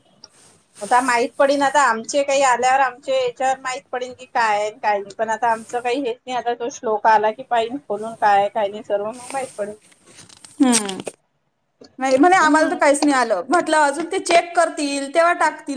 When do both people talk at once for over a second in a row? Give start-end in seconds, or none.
none